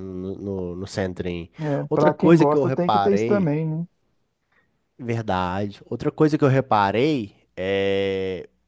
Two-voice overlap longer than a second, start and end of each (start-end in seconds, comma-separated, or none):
1.9-3.5